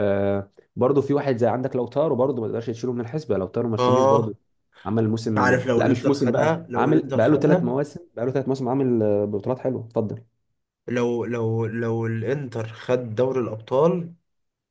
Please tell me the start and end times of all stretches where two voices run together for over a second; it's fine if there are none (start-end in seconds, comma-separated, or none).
5.4-7.7